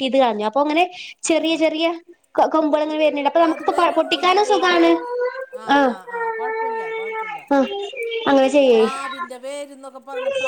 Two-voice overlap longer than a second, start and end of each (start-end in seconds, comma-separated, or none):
3.5-4.8